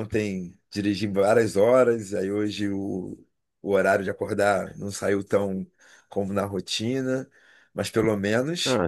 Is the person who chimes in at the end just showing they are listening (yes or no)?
no